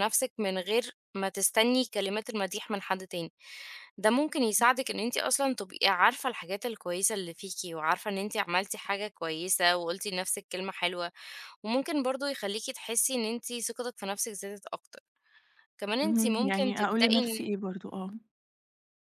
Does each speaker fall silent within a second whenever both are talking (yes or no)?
no